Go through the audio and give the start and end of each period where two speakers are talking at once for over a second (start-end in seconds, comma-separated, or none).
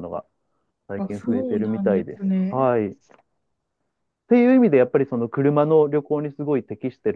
1.0-2.7